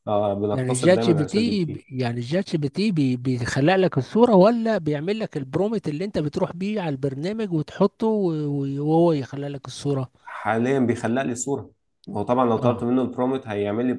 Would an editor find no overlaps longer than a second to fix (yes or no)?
no